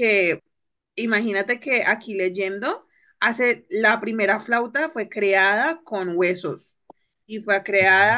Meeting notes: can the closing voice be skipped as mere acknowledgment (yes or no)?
yes